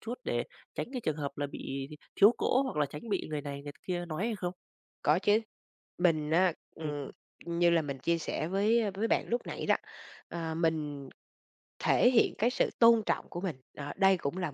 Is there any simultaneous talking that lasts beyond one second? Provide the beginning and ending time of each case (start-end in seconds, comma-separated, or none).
none